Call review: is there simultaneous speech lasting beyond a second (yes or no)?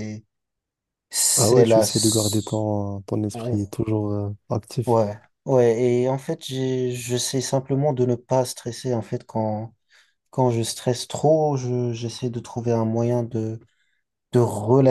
yes